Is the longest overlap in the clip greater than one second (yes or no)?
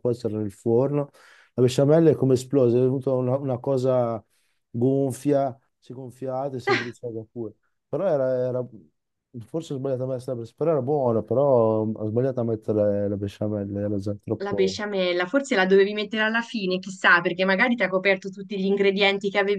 no